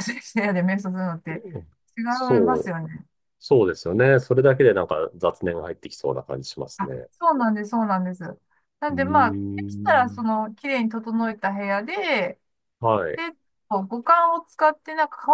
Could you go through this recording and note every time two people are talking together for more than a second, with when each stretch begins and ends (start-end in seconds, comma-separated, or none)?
8.9-10.3